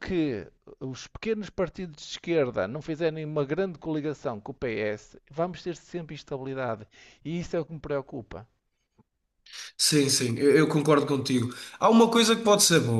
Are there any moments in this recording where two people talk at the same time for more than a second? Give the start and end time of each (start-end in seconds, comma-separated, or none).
none